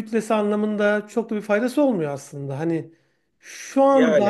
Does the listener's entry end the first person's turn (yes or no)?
no